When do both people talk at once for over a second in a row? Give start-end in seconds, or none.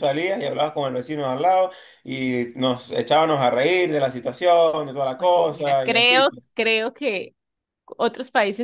5.2-6.4